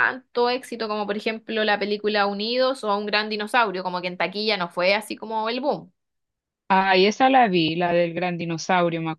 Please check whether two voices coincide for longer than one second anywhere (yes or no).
no